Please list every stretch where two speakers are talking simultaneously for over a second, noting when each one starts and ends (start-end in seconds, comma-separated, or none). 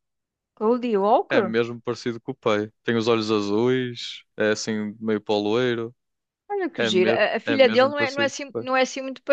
6.8-8.7